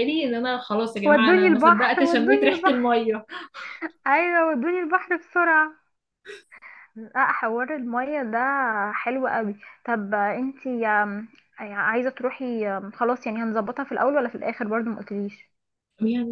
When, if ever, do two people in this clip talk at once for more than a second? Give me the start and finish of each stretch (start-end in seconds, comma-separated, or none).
1.1-3.0